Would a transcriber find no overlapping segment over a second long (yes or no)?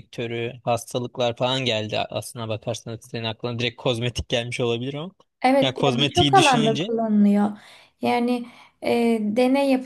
no